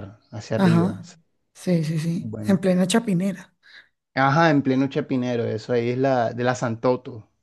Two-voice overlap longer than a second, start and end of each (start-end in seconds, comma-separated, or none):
none